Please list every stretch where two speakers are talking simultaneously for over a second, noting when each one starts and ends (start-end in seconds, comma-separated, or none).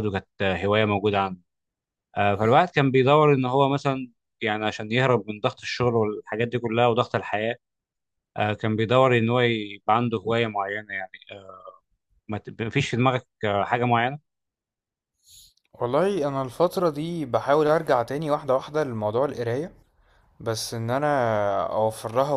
none